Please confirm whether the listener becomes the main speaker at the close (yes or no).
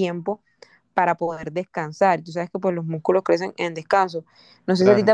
no